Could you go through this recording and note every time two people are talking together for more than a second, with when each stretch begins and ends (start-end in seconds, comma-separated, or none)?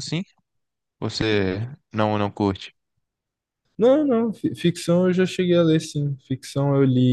none